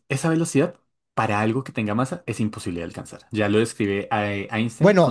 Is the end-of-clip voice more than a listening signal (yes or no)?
yes